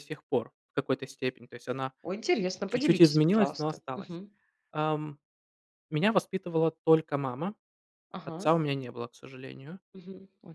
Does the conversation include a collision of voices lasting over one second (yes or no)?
yes